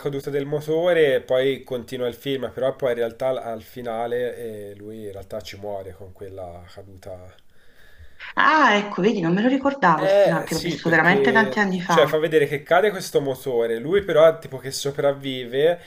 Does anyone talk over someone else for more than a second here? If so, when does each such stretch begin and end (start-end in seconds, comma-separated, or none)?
10.0-12.2